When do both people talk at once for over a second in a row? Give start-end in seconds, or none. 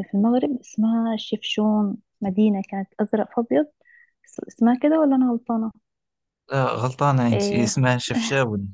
none